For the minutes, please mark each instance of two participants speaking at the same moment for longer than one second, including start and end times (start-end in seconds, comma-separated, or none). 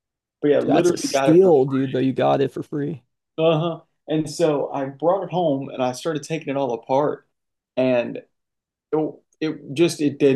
0.6-2.0